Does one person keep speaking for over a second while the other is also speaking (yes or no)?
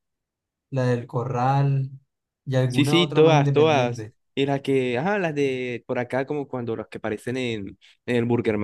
yes